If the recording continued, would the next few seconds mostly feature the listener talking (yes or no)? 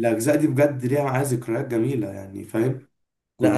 yes